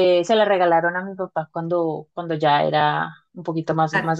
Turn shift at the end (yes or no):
no